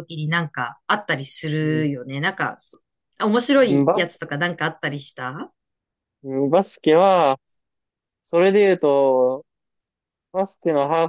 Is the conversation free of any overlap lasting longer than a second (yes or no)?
yes